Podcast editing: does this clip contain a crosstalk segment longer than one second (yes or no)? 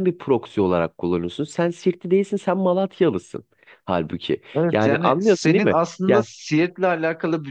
yes